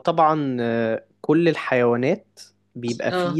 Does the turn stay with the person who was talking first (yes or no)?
yes